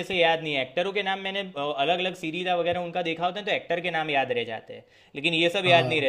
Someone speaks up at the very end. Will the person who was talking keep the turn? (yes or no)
yes